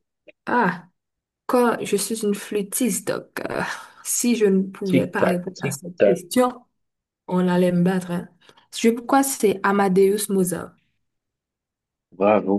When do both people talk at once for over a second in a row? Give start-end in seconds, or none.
4.9-6.2